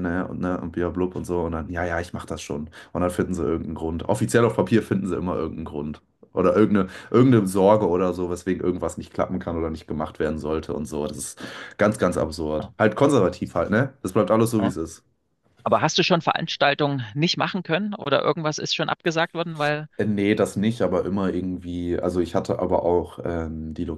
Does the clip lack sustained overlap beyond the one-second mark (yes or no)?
yes